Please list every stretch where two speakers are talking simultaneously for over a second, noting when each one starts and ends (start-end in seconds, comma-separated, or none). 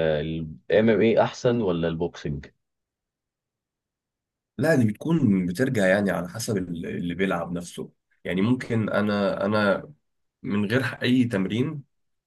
none